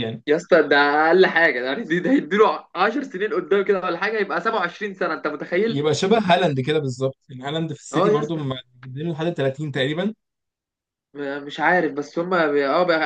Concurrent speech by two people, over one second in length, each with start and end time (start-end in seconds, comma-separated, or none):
none